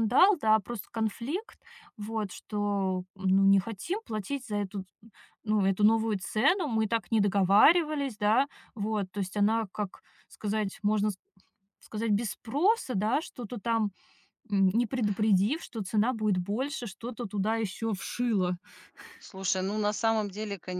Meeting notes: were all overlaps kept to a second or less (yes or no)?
yes